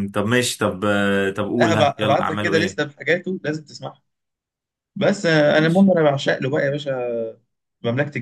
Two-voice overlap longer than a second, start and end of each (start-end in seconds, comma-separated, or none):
1.6-2.8